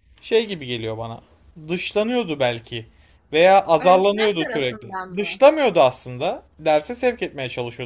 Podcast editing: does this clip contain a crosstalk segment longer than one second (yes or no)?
yes